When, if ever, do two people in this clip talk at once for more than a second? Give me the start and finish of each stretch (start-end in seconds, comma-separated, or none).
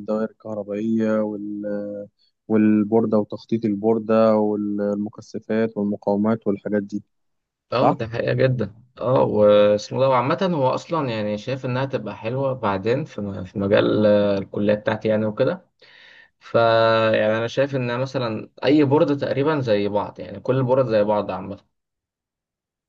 none